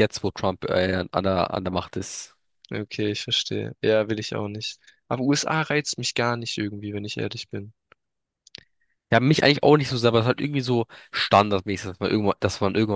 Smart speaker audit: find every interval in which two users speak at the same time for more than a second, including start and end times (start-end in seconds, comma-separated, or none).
none